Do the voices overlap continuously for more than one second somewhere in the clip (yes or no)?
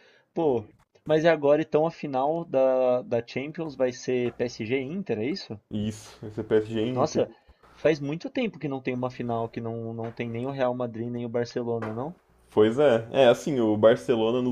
no